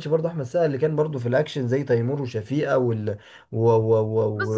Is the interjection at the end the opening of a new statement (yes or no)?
yes